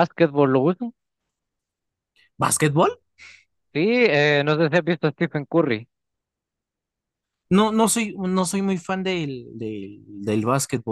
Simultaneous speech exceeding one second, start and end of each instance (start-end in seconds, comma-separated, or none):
none